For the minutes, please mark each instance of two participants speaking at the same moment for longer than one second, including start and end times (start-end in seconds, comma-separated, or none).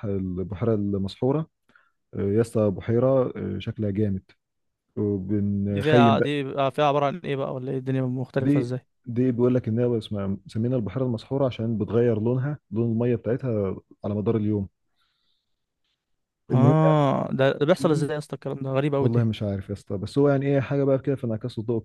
none